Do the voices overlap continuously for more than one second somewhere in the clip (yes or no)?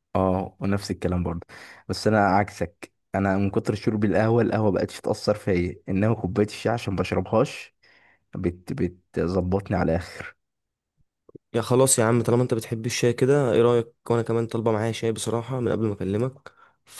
no